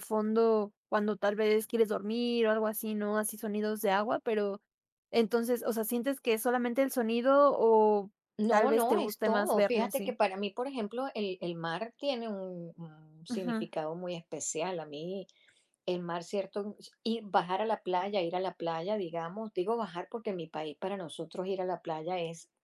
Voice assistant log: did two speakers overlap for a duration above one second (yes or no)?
yes